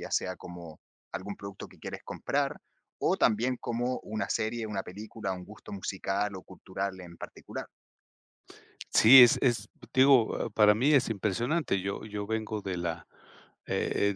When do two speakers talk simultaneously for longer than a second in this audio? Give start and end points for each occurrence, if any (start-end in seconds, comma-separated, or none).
none